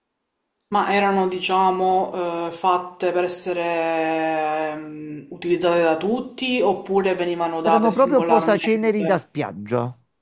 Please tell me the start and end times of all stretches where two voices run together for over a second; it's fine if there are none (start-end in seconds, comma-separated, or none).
7.6-9.3